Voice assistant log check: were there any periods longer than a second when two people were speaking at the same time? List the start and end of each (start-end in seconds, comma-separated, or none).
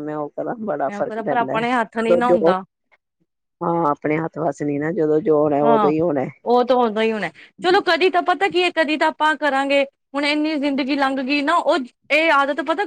0.9-2.4